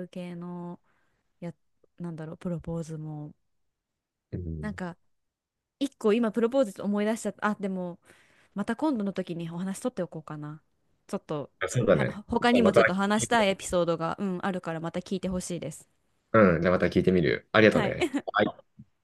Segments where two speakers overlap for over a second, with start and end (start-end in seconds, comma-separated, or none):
11.9-13.5